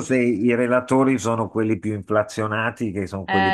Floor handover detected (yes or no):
no